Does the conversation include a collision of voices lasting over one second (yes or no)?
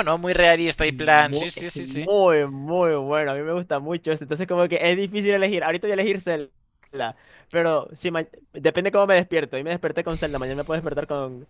yes